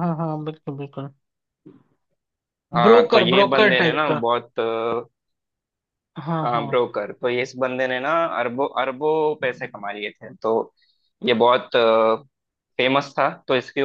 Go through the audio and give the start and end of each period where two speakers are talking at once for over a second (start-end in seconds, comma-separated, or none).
2.8-4.2